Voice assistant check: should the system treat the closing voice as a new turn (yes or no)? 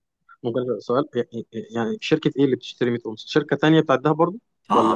yes